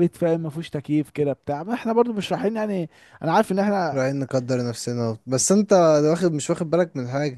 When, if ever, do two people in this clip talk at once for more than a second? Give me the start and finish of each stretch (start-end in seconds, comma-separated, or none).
none